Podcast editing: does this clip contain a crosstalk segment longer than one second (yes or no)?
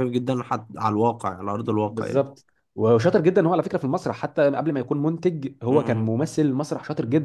no